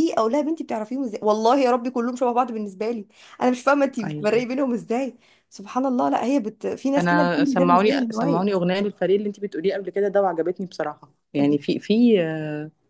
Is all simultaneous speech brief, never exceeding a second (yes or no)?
no